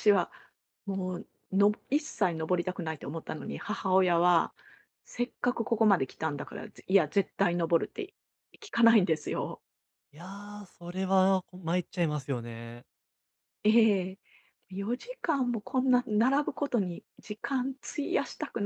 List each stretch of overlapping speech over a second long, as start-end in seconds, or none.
none